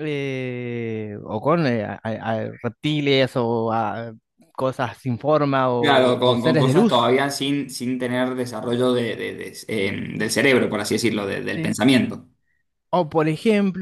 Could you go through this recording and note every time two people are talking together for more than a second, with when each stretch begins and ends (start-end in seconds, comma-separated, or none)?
5.8-7.1